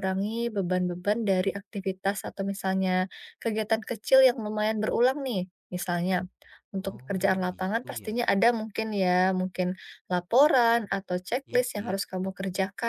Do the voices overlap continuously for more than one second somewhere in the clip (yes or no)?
yes